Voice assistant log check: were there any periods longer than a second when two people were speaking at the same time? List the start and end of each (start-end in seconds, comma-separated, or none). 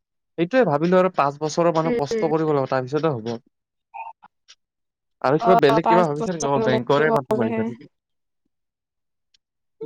5.5-7.6